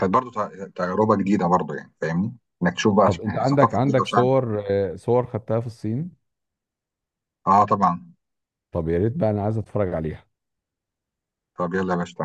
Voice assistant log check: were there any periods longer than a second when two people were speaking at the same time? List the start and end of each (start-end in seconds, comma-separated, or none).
3.0-4.3